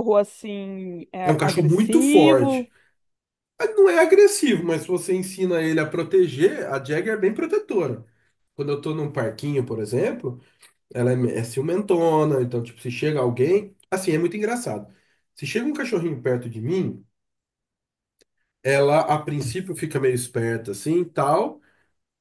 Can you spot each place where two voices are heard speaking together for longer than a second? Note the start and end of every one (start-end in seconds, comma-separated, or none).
1.2-2.7